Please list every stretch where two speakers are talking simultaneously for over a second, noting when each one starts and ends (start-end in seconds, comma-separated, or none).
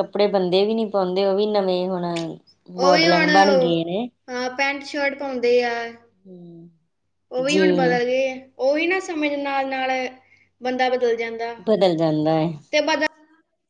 2.8-4.0